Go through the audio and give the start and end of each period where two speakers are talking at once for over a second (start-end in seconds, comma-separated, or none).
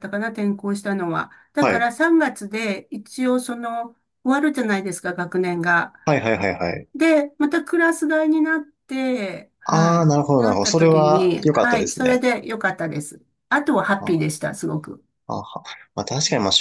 9.6-12.2